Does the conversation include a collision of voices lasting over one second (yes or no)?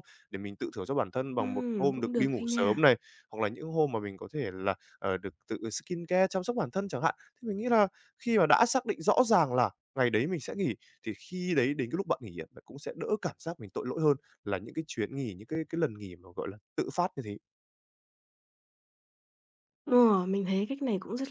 yes